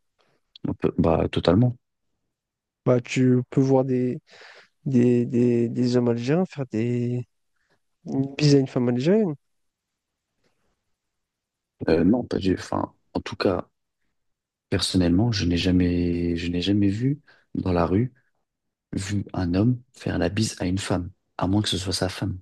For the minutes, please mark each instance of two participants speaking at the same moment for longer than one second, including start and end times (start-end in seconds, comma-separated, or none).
none